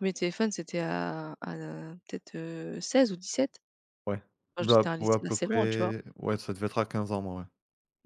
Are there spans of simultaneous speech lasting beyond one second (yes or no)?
yes